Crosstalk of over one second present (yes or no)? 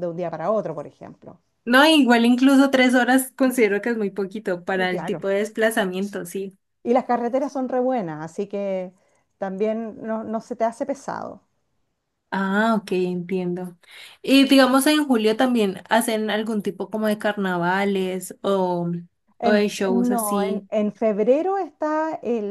yes